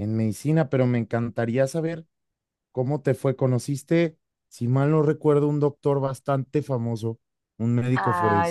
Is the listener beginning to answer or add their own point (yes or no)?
yes